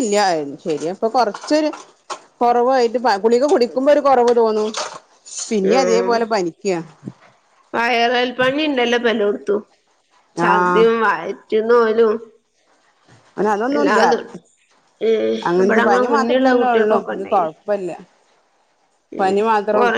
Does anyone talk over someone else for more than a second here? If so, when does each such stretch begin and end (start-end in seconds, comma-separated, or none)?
15.5-17.5